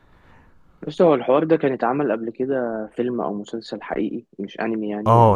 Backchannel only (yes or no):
no